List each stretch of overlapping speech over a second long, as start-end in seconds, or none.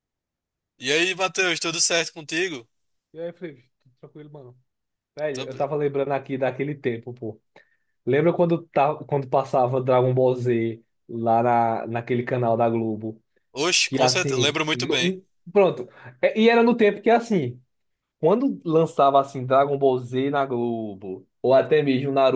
13.8-15.2